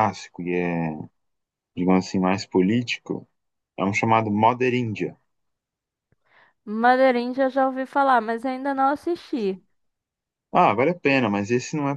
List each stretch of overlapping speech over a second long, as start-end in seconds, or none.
none